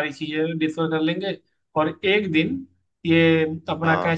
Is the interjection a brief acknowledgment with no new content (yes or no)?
yes